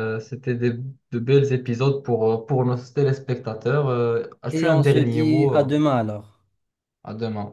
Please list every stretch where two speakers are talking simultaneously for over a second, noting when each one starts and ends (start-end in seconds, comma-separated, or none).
4.5-5.8